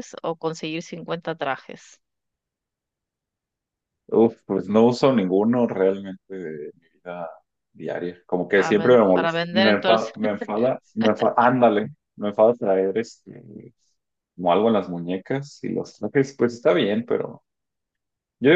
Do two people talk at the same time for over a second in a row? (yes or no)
yes